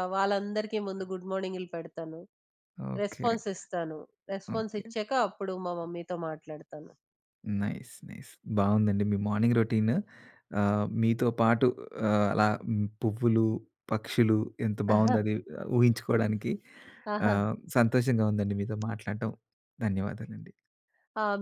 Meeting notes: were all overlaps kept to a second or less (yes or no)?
yes